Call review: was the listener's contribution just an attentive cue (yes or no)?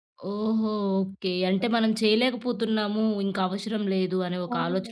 no